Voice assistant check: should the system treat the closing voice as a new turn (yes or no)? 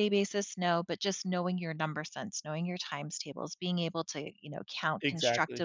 no